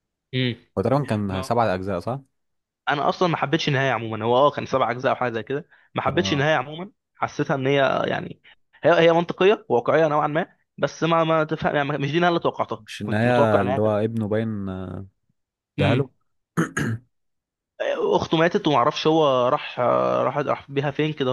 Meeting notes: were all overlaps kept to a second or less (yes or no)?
no